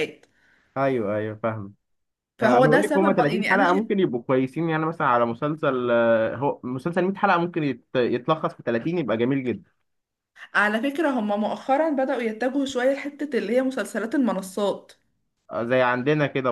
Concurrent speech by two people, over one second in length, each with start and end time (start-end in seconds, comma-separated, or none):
2.4-3.9